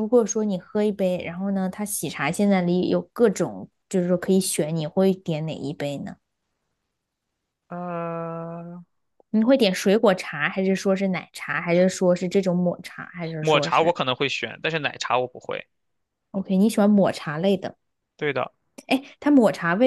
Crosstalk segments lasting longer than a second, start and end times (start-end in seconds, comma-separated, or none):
none